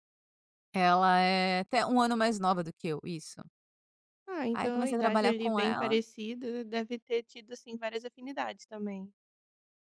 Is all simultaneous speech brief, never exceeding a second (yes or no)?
no